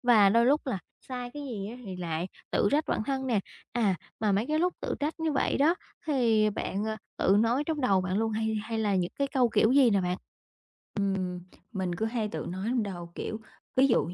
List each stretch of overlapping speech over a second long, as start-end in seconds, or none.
none